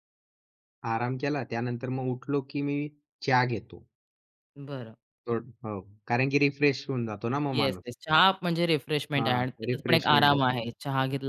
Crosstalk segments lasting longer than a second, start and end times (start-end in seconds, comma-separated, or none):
9.2-10.6